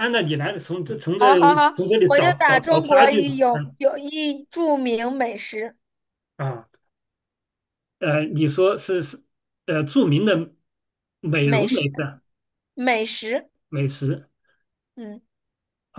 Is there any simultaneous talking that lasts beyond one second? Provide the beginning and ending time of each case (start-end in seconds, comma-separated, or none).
2.1-3.8